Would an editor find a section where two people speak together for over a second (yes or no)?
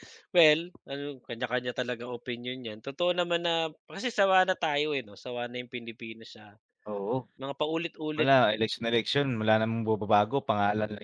no